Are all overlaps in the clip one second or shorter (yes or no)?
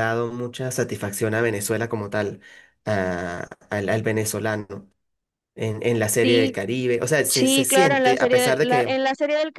no